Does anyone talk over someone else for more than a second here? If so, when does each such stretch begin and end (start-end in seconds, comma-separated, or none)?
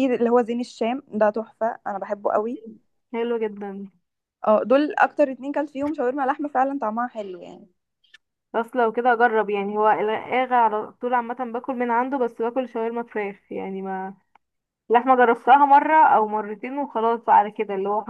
none